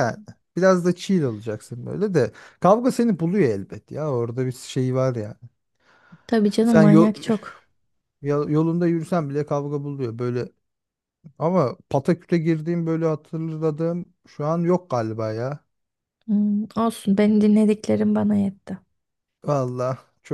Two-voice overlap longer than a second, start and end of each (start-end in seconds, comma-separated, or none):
none